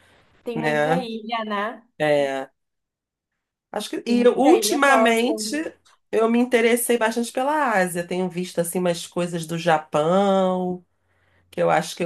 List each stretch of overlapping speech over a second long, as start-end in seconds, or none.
4.0-5.3